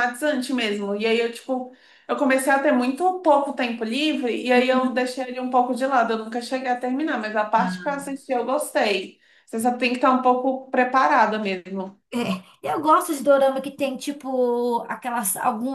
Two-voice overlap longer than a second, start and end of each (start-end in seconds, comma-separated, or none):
none